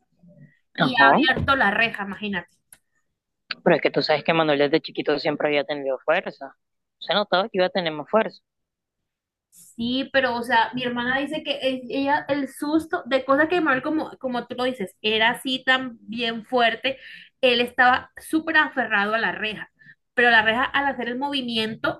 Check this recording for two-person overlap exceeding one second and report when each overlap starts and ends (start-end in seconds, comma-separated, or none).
none